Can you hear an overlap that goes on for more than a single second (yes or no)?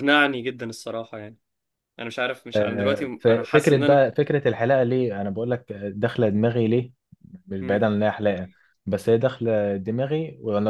yes